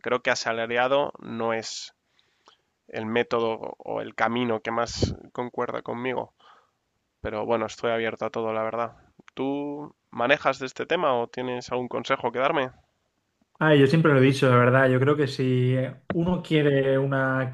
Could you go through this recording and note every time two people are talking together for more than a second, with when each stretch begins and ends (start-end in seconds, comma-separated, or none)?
none